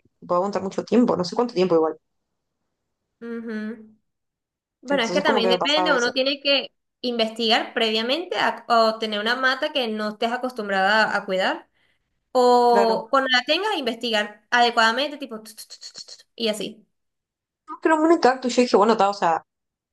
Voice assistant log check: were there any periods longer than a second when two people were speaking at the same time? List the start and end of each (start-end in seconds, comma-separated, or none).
4.9-6.2